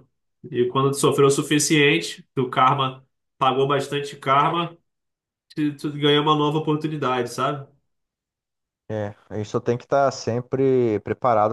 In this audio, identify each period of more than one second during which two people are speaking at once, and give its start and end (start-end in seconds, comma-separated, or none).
none